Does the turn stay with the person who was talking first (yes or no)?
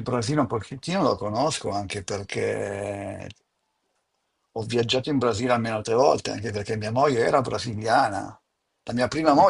yes